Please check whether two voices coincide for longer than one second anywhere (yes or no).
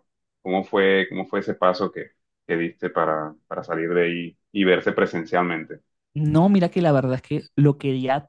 no